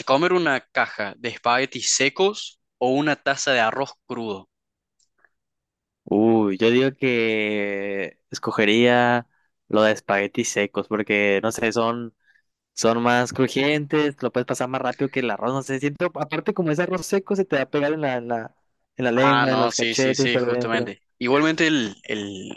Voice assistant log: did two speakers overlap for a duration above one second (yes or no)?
yes